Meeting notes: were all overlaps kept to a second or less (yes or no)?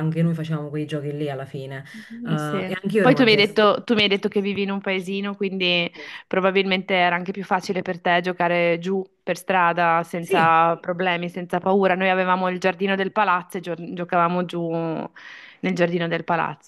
no